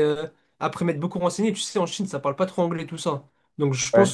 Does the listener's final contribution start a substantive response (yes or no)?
no